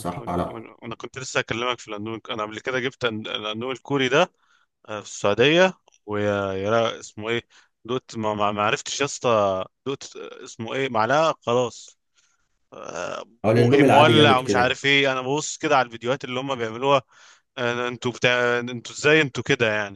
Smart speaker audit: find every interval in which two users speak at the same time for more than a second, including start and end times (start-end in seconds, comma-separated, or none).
13.4-14.8